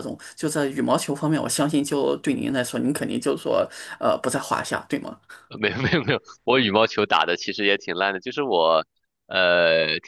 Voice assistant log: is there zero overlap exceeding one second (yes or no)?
yes